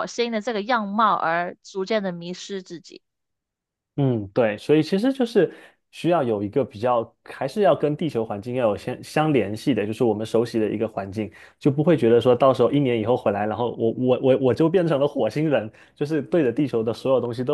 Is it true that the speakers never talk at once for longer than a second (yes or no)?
yes